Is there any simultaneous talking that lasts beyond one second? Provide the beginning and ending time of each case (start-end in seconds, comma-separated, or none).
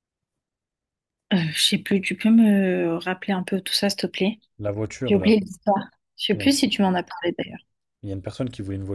none